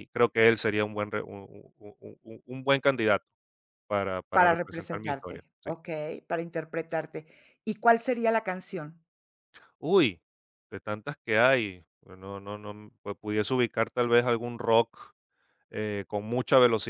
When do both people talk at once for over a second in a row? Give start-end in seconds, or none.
4.3-5.7